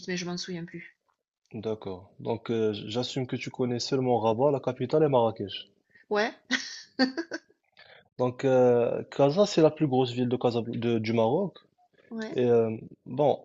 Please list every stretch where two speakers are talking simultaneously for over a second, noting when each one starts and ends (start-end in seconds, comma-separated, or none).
none